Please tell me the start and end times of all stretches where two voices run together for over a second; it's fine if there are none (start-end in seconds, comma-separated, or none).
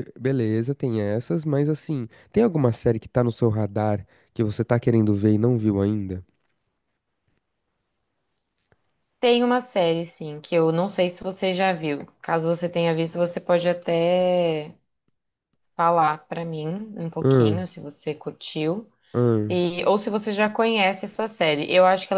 none